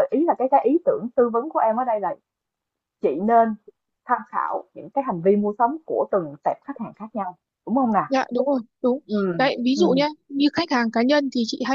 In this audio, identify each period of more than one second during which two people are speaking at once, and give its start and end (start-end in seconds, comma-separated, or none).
none